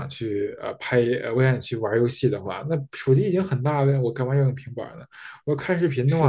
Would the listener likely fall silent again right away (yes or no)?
yes